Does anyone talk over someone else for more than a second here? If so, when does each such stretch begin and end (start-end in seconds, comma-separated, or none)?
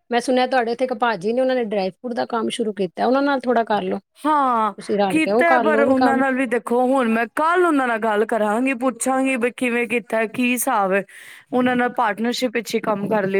none